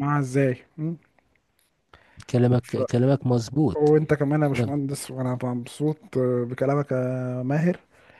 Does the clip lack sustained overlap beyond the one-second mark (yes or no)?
yes